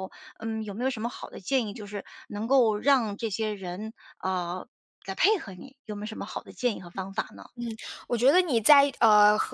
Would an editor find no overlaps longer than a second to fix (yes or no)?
yes